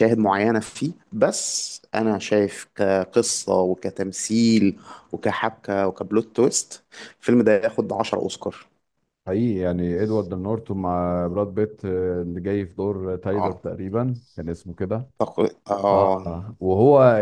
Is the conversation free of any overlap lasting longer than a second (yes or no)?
yes